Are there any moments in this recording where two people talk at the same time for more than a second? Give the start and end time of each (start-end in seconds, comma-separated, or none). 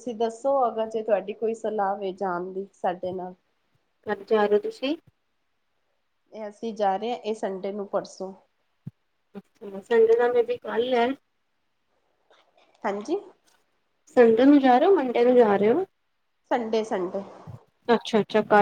none